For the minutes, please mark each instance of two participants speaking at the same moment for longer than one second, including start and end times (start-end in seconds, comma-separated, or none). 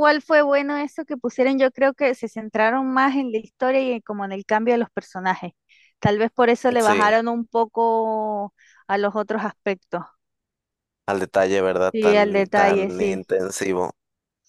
11.9-13.3